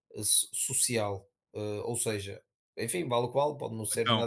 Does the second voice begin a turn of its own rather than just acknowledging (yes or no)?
no